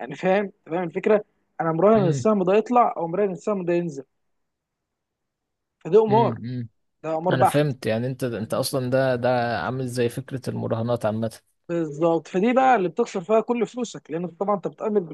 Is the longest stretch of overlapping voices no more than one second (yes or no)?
yes